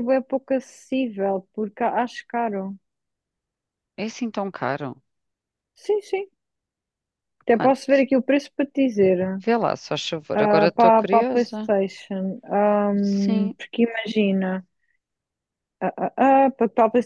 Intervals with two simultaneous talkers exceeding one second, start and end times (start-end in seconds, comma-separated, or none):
10.3-11.7